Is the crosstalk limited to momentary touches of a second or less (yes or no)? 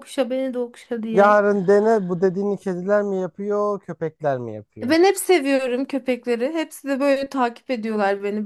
yes